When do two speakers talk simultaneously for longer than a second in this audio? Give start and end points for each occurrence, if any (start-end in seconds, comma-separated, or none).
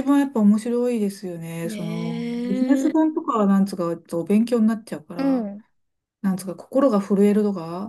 1.6-3.1